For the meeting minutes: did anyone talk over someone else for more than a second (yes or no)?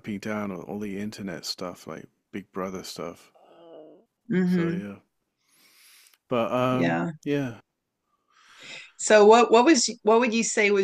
no